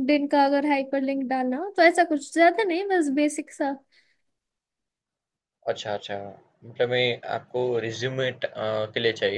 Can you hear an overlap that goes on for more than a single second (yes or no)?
no